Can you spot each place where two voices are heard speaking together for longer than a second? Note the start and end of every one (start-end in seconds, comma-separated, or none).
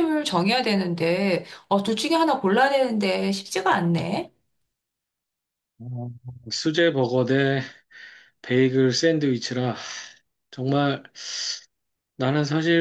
none